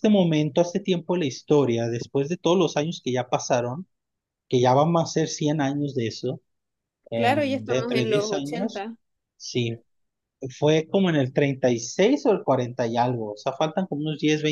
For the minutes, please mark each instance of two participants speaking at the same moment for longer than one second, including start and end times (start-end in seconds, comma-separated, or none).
7.1-8.9